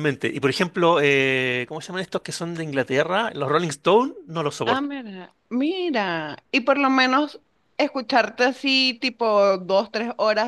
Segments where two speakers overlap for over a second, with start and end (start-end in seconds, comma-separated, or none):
none